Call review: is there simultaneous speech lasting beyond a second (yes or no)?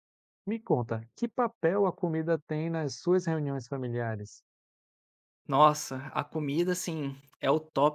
no